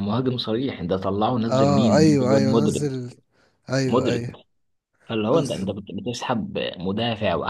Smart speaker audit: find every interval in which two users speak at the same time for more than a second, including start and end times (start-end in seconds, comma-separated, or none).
1.5-2.9